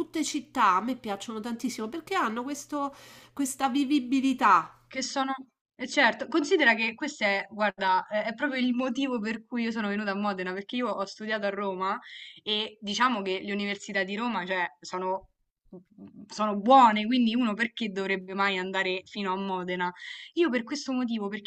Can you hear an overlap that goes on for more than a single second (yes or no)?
no